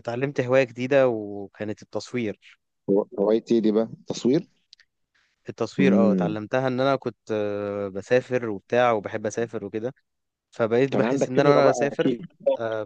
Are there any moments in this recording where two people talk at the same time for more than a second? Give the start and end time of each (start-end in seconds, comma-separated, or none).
10.9-12.2